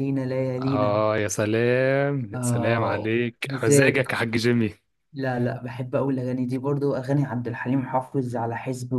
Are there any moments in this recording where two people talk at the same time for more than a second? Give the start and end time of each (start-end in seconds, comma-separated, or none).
2.3-4.1